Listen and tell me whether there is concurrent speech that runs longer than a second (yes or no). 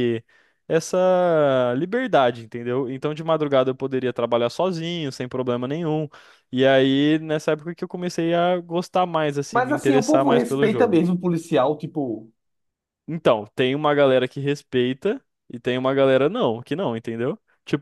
yes